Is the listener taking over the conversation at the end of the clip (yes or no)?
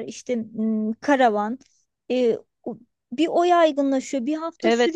no